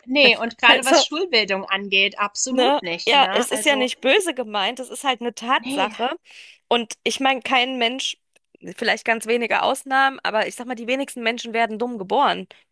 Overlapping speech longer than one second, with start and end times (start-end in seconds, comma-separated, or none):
2.5-3.9